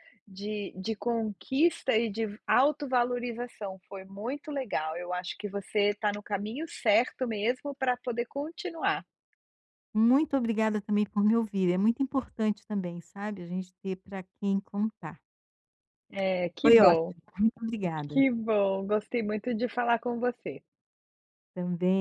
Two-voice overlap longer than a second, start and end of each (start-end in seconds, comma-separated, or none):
none